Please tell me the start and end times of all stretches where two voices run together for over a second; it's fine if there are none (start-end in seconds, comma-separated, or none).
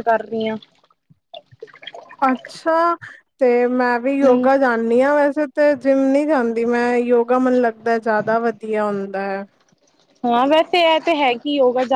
none